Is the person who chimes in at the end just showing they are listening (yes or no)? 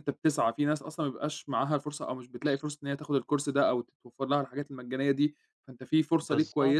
yes